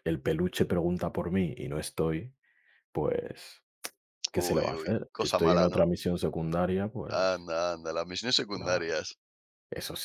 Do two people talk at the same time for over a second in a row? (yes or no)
yes